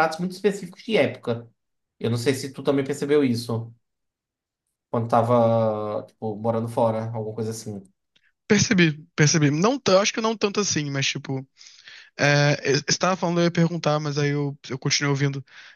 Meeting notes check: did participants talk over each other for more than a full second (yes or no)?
no